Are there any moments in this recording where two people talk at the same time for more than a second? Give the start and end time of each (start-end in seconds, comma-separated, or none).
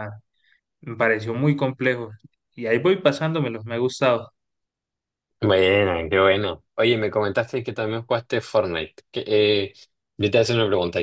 none